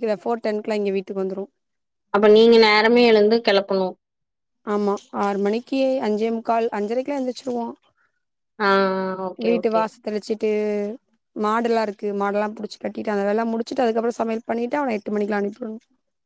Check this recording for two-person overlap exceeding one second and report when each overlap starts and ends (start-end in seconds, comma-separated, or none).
none